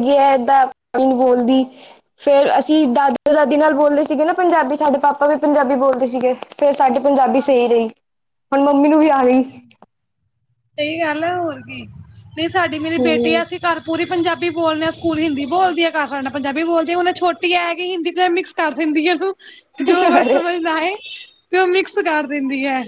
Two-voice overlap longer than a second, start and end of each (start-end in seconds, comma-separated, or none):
none